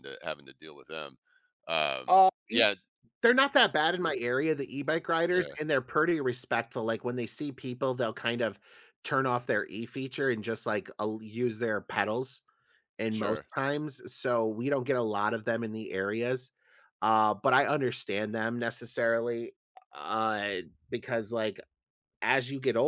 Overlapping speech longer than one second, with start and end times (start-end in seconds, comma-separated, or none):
none